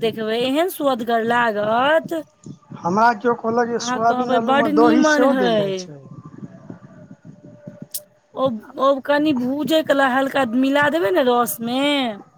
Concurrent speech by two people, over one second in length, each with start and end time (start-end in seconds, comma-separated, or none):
3.6-5.8